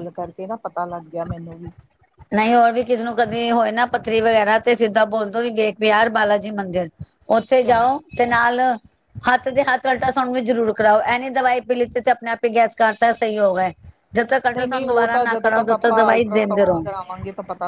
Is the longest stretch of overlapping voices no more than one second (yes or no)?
no